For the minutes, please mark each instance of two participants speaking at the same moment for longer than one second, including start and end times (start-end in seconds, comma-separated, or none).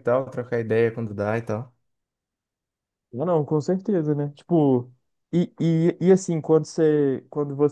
none